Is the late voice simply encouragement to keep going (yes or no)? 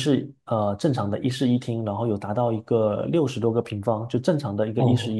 no